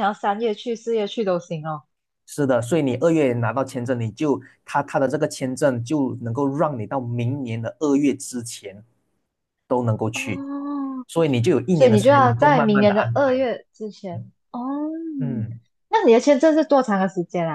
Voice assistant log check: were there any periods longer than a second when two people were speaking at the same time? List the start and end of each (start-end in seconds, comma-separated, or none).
11.7-13.4